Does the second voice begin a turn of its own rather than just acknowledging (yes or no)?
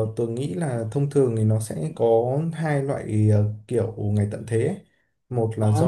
no